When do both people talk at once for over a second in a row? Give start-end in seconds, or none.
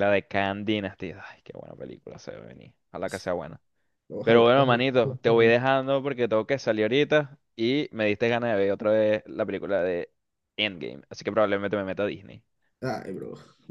4.2-5.6